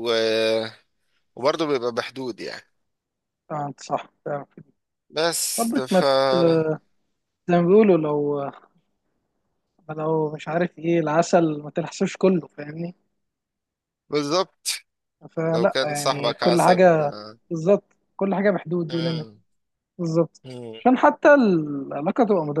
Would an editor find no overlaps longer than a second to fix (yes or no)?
no